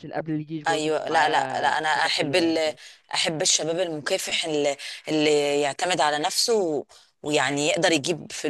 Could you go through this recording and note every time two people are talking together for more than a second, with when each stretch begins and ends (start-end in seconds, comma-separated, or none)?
0.7-2.7